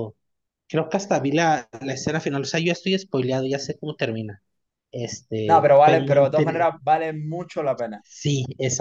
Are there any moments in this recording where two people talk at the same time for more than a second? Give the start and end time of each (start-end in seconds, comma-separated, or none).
5.5-6.7